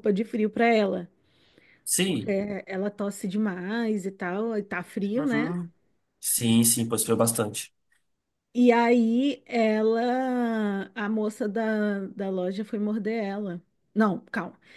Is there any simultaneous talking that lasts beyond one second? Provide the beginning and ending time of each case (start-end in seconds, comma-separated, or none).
none